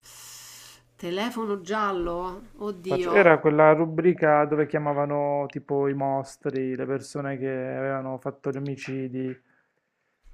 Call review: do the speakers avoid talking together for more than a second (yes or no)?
yes